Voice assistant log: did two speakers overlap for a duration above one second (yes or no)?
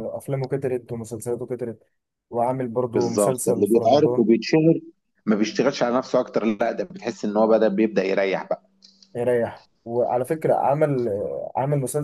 yes